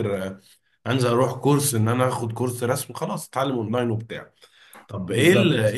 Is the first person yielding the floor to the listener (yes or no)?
no